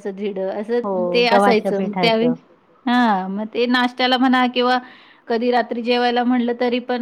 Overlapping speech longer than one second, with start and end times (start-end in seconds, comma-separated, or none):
0.8-2.3